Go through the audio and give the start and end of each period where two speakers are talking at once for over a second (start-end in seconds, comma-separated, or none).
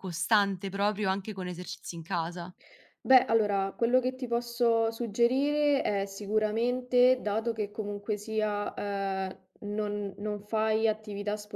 none